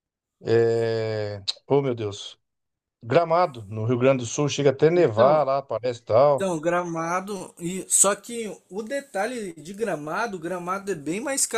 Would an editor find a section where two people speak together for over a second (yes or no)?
no